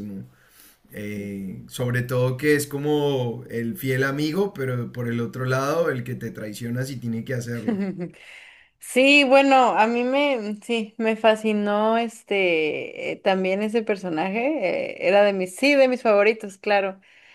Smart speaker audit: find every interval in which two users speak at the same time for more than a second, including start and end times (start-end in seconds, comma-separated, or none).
none